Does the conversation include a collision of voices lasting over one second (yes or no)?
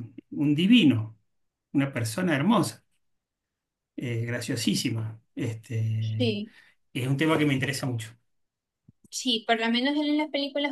no